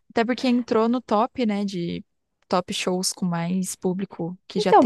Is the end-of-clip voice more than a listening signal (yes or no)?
yes